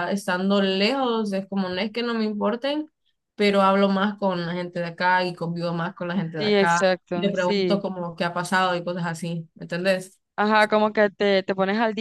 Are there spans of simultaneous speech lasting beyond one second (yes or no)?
yes